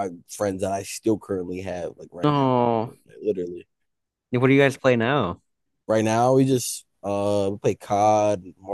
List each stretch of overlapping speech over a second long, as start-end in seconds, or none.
none